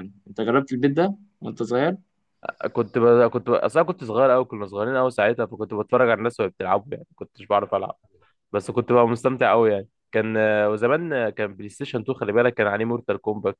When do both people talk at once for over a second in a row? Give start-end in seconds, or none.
none